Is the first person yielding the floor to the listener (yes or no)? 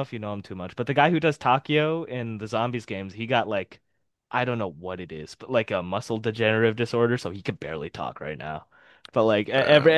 no